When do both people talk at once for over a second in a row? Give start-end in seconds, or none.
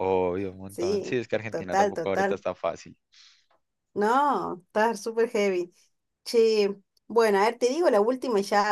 0.7-2.4